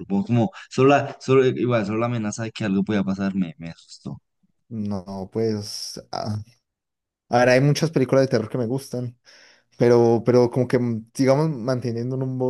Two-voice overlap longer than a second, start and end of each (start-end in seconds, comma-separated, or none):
none